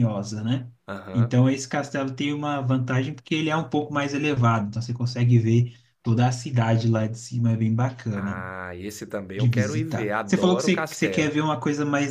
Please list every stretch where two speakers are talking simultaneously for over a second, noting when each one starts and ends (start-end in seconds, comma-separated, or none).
9.3-11.4